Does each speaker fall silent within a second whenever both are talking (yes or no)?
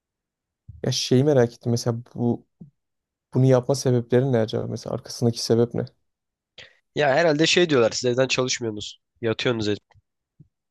yes